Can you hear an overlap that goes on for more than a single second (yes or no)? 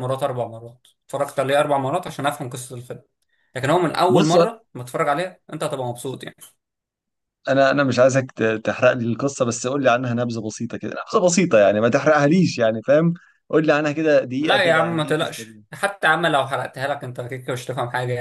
yes